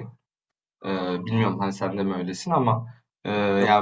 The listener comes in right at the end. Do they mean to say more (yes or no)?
no